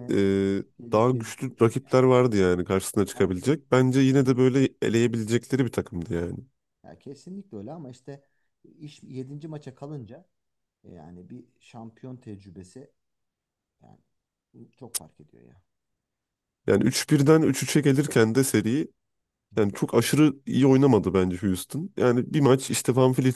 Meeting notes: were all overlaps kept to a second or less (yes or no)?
no